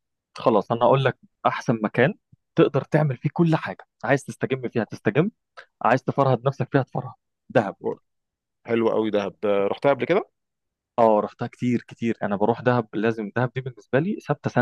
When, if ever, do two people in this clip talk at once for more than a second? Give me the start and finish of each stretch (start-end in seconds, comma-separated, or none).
none